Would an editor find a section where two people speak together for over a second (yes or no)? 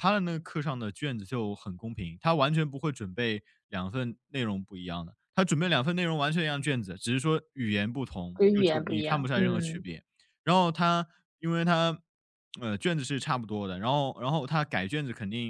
yes